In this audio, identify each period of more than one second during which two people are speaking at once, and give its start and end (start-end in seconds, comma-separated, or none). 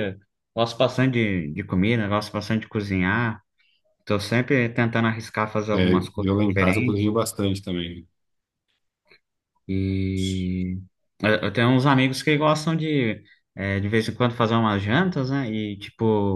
5.7-7.1